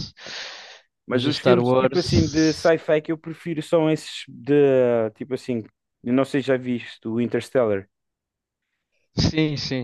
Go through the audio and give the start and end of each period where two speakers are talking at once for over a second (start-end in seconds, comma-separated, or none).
1.1-2.7